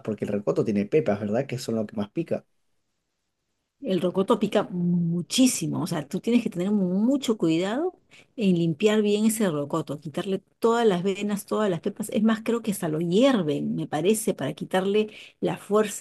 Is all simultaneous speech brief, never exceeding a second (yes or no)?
yes